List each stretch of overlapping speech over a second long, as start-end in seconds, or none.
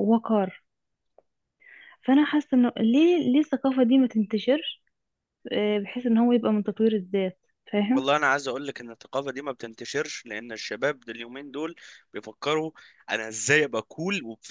none